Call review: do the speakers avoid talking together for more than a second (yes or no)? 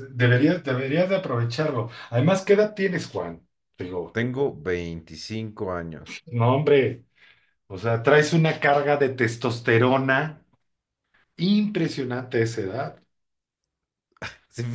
yes